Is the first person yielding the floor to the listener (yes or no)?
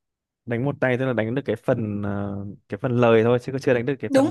yes